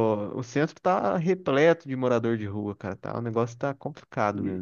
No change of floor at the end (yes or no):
no